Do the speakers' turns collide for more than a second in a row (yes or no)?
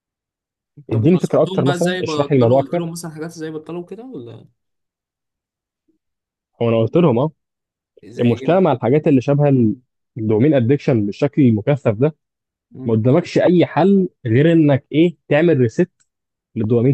yes